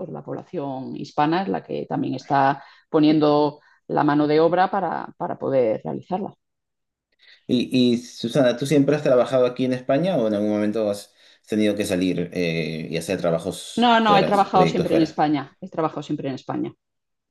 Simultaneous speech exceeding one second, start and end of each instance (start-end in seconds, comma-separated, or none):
13.8-15.2